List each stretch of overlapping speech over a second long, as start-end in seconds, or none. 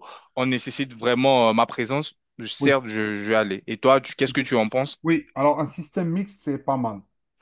none